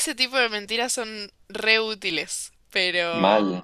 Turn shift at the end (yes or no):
no